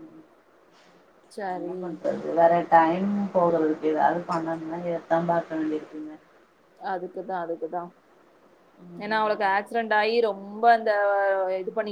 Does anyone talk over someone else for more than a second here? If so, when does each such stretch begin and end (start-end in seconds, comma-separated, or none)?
none